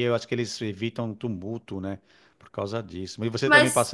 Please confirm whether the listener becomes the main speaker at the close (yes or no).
no